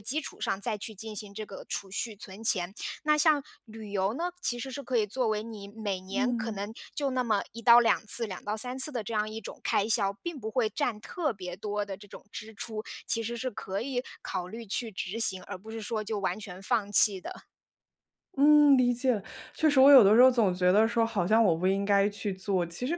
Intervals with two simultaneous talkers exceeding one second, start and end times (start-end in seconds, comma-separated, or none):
none